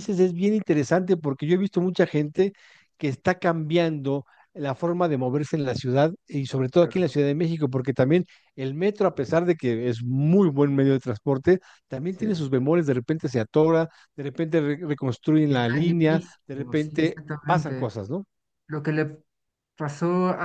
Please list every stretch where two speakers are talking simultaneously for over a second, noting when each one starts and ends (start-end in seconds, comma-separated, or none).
15.5-17.9